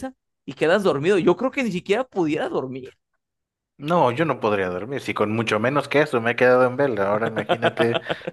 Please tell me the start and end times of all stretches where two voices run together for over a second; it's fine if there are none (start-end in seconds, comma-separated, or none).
none